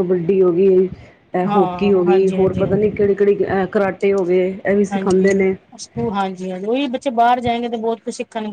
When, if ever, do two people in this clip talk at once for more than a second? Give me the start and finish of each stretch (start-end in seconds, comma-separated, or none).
1.5-2.9